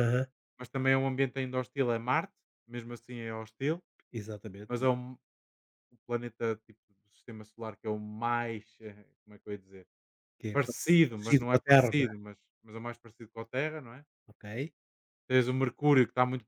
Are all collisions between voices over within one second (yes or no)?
no